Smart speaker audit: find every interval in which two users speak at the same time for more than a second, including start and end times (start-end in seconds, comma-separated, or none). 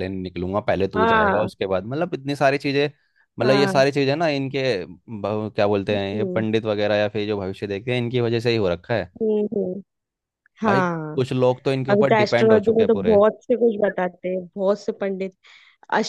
11.9-13.2